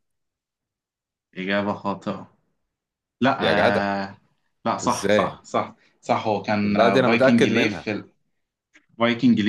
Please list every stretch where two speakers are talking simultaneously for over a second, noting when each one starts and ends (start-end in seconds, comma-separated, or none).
6.6-7.9